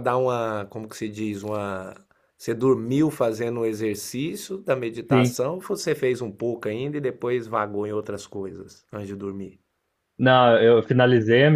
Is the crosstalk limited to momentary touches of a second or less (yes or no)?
yes